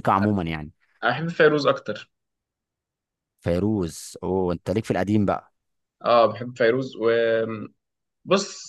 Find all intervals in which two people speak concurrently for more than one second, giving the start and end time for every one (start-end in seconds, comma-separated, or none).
none